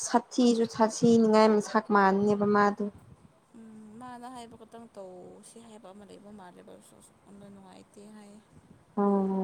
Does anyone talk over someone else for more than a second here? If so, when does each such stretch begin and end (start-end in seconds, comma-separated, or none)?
none